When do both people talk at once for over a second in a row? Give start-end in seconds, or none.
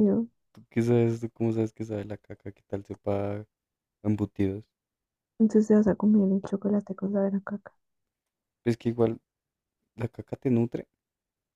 none